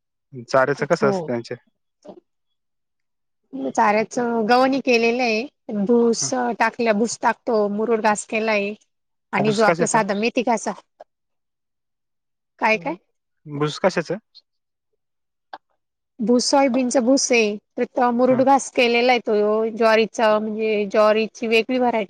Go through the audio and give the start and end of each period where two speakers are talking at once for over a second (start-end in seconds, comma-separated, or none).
none